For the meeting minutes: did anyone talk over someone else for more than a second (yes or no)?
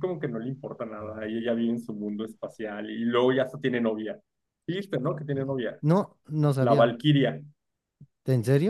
no